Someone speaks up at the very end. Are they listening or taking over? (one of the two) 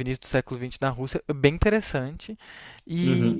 taking over